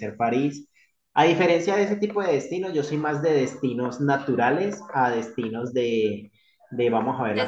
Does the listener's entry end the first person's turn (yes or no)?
no